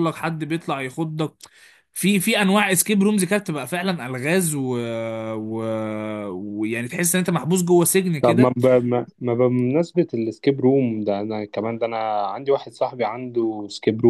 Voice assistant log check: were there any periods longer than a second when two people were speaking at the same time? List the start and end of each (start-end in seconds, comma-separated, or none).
none